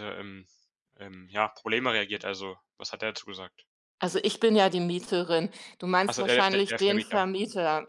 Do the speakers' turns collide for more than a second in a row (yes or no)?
yes